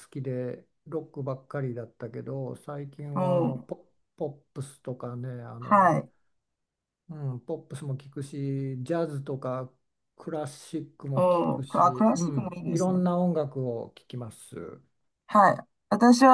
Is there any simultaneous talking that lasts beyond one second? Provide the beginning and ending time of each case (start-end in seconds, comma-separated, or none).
11.1-13.0